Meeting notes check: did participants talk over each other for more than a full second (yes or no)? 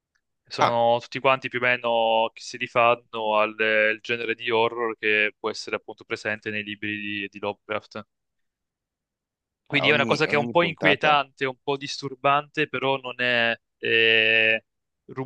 yes